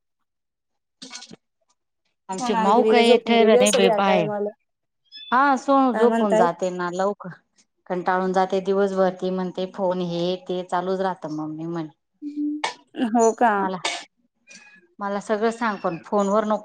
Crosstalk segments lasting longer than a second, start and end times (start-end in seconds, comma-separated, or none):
2.4-4.3